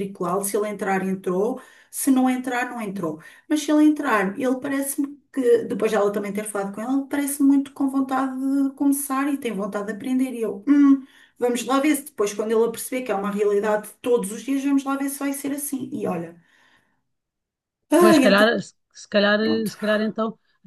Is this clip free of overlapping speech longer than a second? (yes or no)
yes